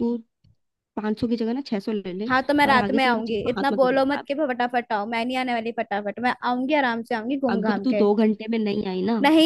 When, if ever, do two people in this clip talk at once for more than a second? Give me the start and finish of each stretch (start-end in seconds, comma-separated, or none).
2.3-4.3